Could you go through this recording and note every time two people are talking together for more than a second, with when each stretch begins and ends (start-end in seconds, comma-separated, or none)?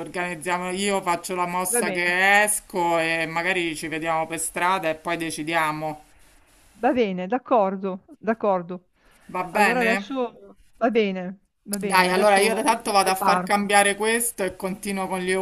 11.8-13.5